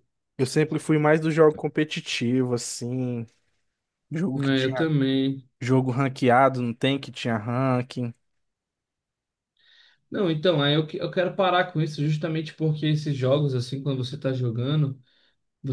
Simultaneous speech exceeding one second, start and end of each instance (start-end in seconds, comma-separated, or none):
none